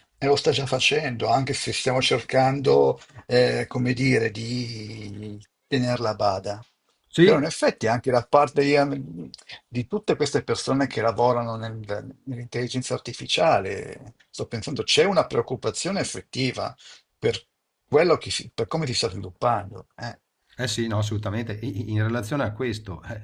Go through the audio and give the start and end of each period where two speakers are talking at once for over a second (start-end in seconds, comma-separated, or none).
none